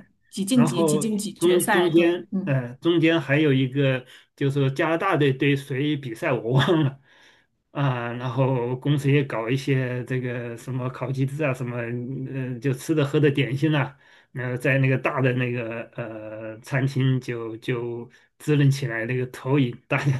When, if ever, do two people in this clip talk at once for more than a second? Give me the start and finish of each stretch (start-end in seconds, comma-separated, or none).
0.5-2.5